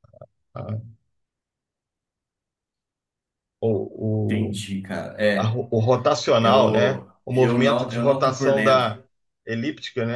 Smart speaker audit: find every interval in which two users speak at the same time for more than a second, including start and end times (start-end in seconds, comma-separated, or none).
6.4-8.9